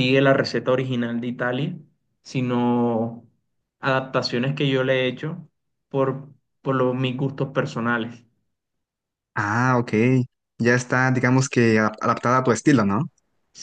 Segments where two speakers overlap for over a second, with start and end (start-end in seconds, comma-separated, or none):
none